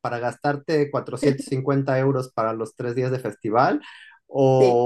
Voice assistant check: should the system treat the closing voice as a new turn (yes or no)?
no